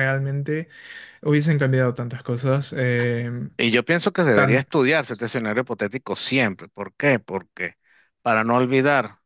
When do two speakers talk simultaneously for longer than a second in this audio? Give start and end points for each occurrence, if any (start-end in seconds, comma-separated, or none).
none